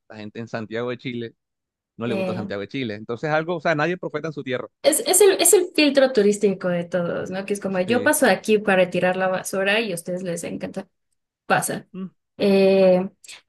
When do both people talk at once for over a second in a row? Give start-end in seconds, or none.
none